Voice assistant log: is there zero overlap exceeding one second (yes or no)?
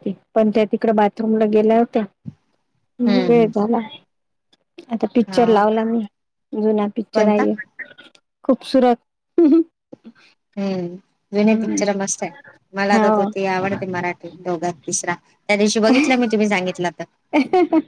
yes